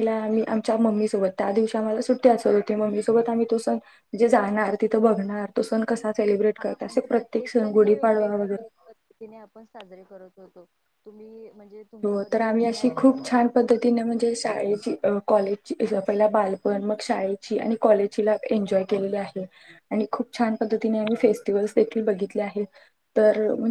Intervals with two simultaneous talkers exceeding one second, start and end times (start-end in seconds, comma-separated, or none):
12.0-13.6